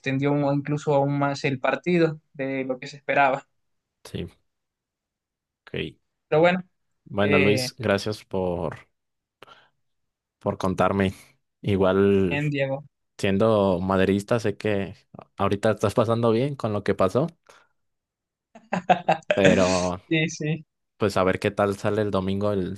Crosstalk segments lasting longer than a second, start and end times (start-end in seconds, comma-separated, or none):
none